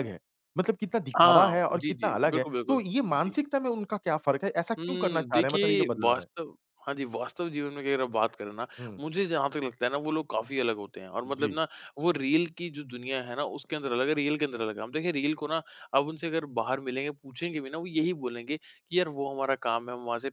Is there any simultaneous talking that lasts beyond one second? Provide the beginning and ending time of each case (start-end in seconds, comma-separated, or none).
1.2-3.3, 4.8-6.2